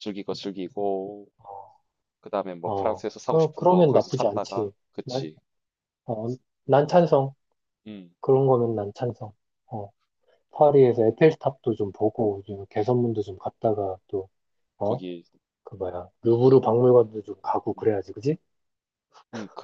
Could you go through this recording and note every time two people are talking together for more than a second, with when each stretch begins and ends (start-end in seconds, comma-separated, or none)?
2.6-5.3